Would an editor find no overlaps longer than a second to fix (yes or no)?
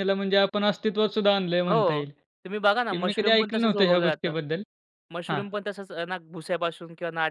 no